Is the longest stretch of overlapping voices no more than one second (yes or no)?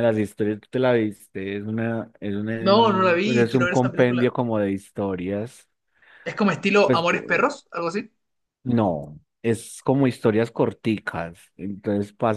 no